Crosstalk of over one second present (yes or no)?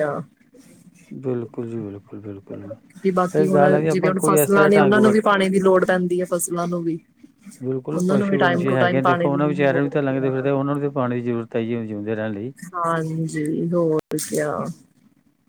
yes